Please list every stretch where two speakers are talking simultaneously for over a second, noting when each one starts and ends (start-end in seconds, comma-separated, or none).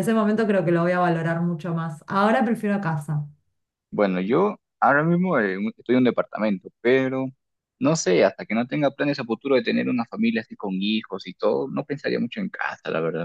none